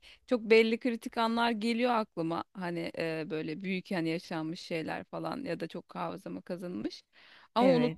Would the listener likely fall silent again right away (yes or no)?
yes